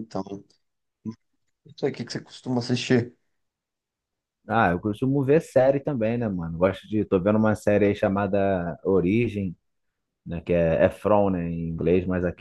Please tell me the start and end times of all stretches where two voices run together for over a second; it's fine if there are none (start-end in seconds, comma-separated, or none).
none